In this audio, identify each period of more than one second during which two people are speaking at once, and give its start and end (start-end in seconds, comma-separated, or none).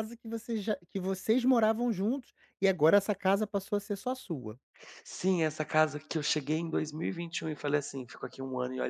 none